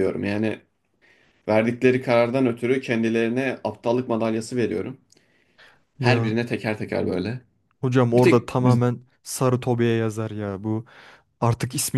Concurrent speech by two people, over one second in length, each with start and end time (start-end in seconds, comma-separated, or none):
none